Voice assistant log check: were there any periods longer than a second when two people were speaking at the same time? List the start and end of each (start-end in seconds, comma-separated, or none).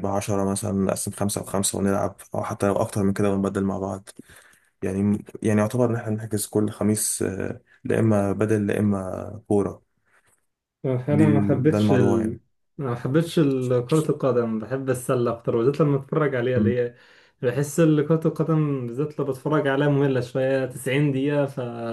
11.1-12.4